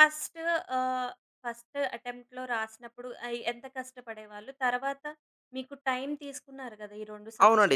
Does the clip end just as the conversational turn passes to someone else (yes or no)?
yes